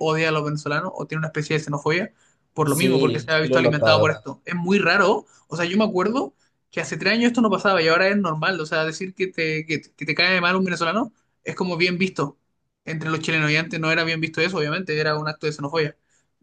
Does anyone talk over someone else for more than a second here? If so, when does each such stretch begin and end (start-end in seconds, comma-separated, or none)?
2.6-4.2